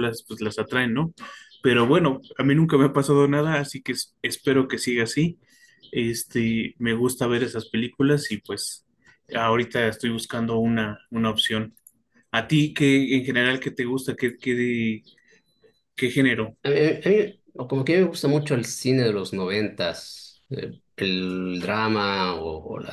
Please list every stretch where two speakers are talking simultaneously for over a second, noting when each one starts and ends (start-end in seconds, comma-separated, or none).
none